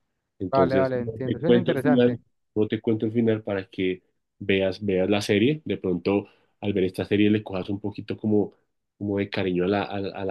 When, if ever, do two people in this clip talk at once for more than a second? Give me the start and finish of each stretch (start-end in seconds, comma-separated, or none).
0.5-2.2